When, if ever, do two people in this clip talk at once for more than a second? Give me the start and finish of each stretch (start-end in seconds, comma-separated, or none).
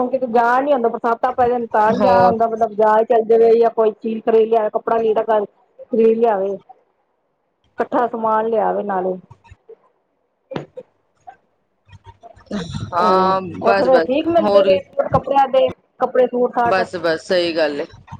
13.0-14.8